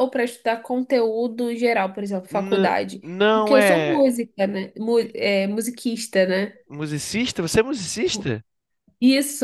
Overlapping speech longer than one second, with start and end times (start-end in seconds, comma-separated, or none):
2.3-4.0